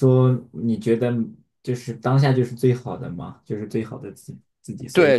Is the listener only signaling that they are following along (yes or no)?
no